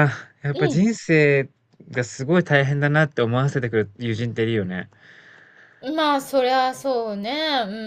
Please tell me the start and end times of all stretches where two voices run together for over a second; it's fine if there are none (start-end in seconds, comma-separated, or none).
none